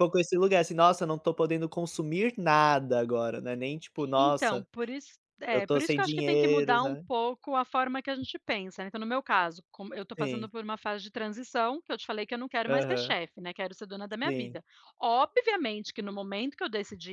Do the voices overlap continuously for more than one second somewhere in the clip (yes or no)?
yes